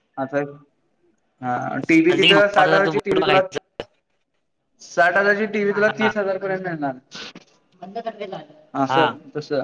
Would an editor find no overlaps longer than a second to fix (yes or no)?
no